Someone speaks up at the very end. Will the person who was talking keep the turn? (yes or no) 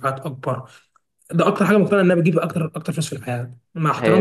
no